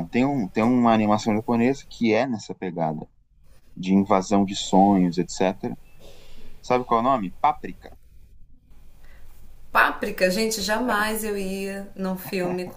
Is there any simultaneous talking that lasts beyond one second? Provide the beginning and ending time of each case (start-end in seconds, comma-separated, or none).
none